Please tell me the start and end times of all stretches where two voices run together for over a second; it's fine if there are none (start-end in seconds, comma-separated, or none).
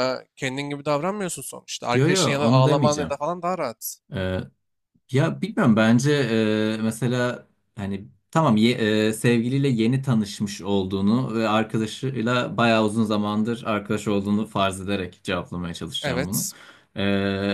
1.9-3.1